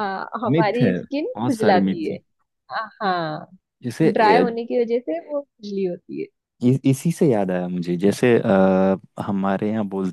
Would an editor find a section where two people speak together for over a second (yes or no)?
yes